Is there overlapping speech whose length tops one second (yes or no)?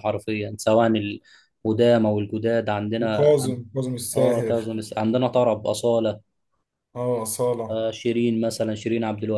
no